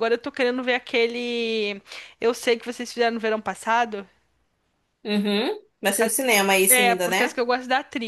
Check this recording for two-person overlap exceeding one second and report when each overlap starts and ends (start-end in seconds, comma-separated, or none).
5.9-7.3